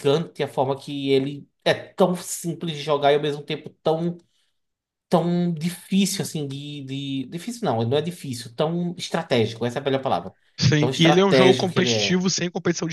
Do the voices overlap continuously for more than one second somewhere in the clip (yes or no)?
yes